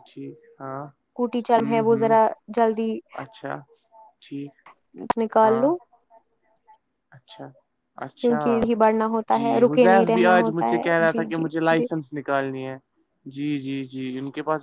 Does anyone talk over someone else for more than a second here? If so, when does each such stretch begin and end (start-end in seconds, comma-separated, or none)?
9.3-11.9